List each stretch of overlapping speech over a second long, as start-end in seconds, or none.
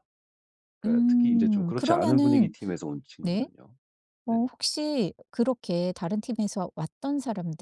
0.8-2.5